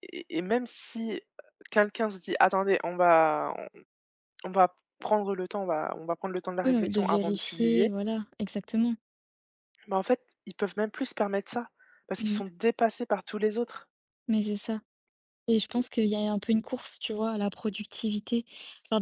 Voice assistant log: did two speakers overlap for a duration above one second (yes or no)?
yes